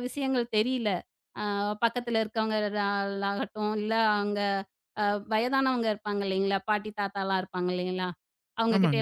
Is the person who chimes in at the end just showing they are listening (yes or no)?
yes